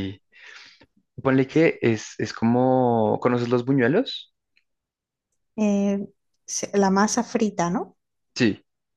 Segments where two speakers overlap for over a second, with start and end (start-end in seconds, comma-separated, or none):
none